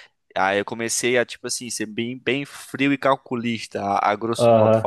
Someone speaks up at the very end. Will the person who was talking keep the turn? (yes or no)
no